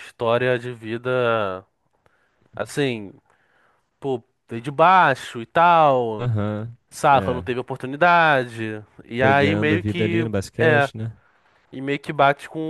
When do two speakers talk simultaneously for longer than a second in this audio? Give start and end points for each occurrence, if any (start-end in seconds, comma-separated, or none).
9.2-10.9